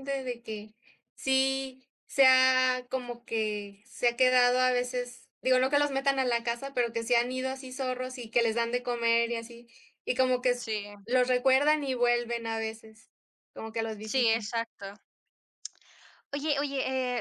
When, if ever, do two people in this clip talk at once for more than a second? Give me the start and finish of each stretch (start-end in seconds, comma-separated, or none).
none